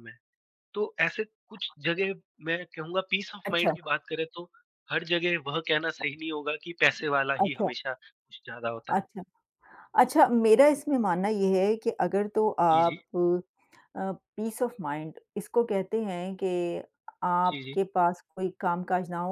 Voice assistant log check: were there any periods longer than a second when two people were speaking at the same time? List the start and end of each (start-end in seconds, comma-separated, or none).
none